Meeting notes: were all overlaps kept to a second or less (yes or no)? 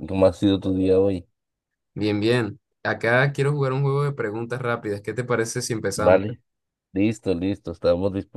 yes